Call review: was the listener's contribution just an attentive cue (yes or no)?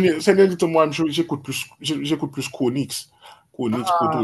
no